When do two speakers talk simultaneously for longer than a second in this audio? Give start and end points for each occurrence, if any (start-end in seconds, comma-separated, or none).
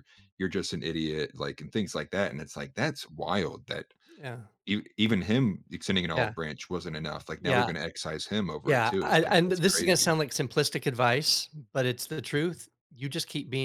8.6-10.1